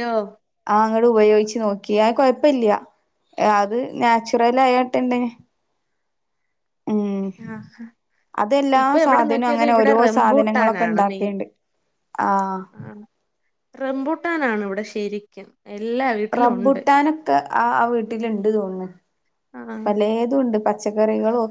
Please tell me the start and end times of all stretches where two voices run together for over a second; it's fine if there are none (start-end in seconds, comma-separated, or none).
10.1-11.3